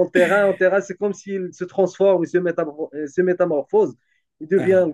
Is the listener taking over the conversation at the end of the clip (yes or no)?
no